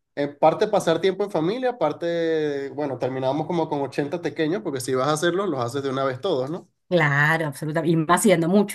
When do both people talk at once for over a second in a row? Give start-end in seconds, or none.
none